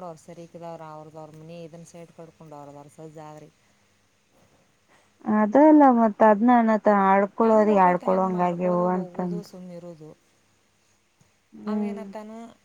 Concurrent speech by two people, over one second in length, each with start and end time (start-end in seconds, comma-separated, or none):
7.4-9.4